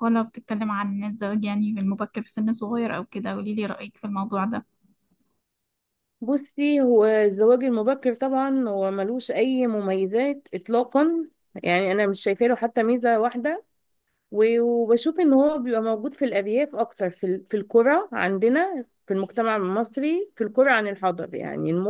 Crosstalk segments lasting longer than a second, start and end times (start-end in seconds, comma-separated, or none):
none